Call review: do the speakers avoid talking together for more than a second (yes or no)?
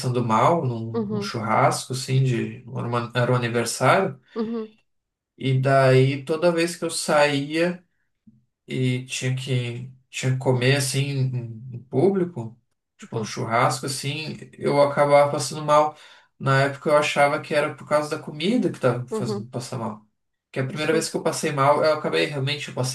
yes